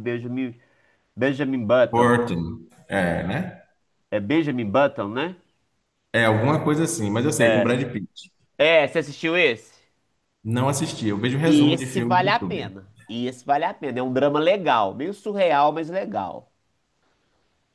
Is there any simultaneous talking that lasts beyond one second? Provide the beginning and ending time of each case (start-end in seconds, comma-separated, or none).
11.4-12.7